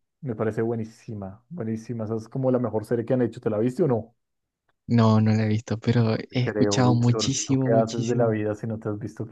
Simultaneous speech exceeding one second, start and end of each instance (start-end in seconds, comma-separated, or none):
6.4-8.3